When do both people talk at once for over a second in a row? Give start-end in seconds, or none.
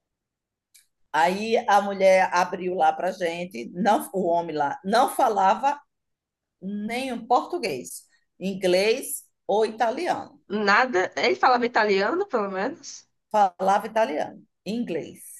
none